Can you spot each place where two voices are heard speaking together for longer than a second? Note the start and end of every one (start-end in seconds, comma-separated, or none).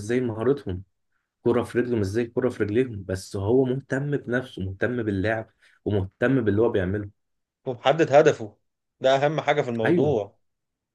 none